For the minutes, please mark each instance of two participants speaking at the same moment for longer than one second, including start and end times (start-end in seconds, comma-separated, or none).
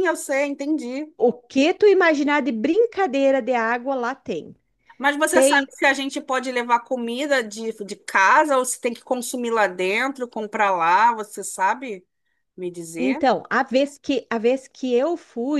none